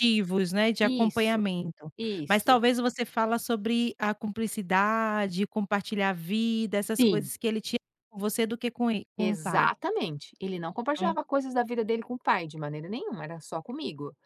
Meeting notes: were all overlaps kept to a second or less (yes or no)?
yes